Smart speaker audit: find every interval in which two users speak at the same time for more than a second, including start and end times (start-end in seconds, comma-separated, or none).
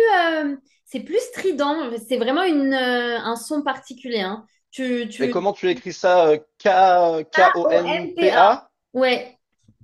7.3-8.6